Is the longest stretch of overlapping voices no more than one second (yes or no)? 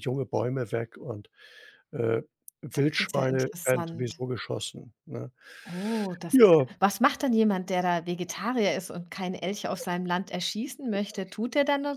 no